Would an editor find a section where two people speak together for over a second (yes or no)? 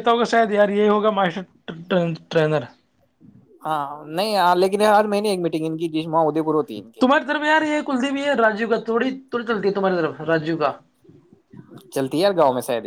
no